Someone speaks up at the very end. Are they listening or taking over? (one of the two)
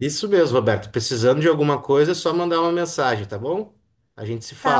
taking over